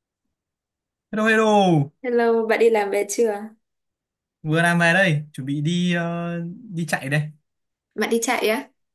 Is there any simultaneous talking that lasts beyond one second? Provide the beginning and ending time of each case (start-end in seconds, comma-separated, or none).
none